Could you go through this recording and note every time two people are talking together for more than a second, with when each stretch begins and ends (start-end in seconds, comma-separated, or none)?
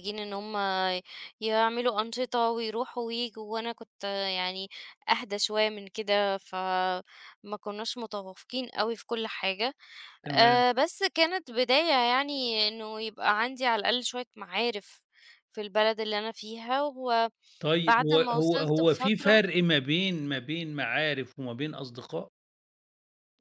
18.1-19.4